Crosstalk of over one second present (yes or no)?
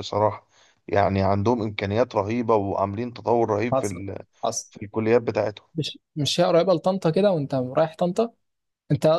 no